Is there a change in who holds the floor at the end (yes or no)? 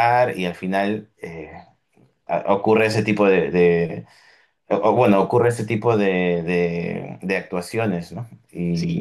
yes